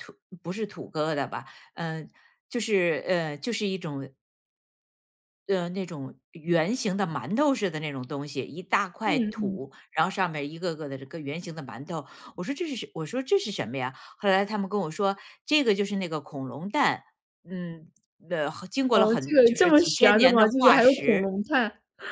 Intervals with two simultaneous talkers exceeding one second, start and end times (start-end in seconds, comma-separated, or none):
18.9-21.3